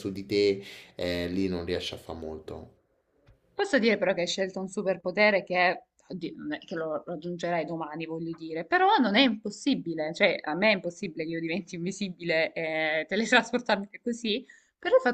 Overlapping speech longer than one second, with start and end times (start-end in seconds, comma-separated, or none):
none